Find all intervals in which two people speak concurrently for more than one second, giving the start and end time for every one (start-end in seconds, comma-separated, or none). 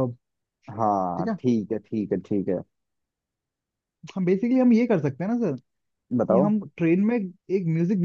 none